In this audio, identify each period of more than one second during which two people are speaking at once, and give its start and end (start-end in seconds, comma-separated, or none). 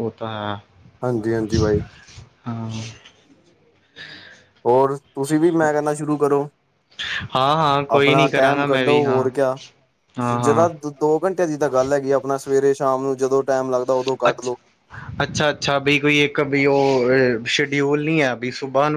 7.9-9.3